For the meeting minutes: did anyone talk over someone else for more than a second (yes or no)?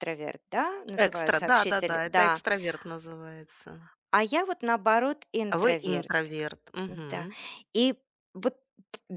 yes